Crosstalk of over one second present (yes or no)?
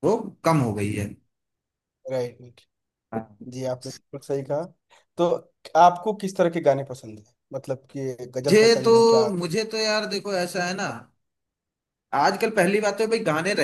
no